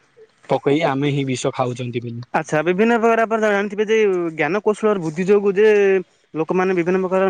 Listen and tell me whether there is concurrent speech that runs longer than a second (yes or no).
no